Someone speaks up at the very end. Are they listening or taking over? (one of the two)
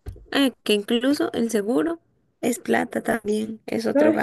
taking over